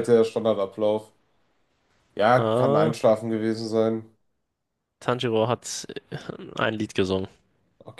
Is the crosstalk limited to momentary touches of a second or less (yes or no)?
yes